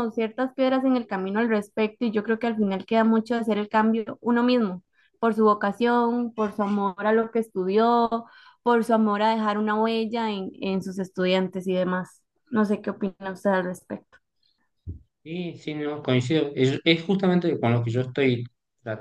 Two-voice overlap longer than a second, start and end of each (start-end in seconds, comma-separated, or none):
none